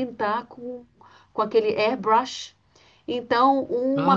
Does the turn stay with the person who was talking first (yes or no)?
yes